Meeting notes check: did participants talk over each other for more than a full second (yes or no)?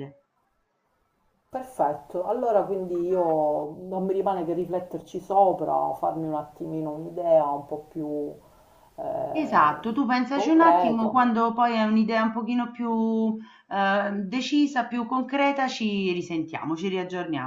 yes